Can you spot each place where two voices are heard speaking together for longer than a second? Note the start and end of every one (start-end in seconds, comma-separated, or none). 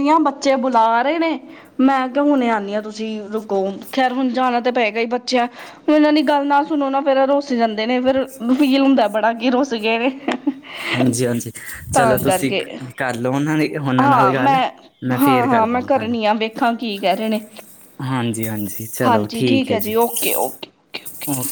none